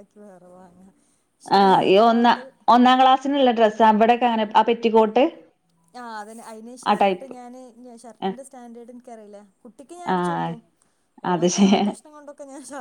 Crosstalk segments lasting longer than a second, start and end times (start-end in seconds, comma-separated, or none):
none